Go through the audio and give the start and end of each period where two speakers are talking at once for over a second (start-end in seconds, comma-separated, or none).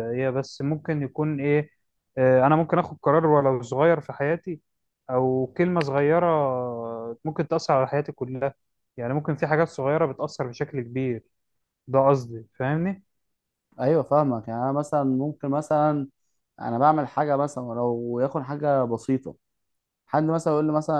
none